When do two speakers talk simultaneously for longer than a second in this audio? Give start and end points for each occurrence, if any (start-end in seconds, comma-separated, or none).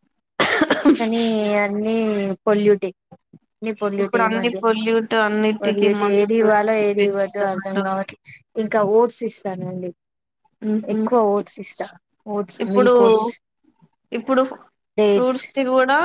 5.6-7.8